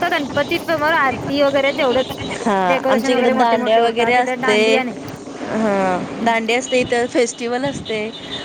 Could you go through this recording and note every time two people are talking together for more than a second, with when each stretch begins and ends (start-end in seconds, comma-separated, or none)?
2.7-4.6